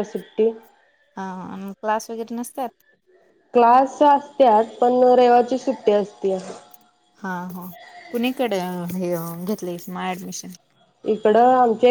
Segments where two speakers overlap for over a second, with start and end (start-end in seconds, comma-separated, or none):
none